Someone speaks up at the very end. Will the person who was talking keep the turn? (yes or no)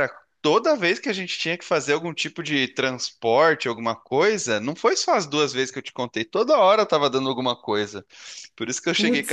yes